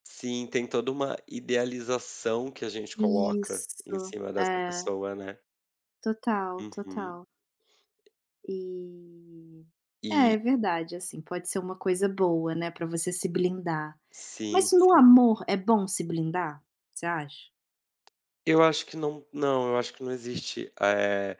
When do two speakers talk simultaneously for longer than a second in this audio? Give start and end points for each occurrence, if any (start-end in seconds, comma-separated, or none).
3.0-4.8